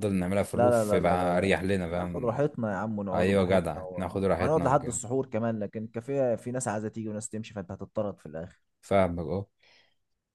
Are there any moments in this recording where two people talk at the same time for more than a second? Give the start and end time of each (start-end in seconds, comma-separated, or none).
0.5-2.4, 3.1-5.0